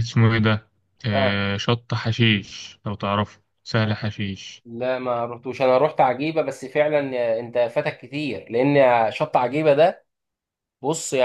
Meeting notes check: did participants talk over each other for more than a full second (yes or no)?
no